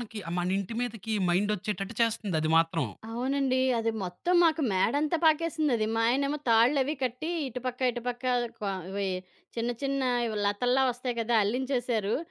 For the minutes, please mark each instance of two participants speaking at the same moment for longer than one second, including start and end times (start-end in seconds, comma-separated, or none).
none